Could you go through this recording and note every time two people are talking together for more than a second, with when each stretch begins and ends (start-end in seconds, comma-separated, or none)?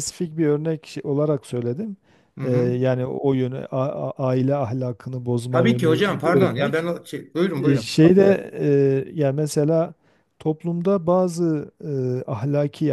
5.5-6.9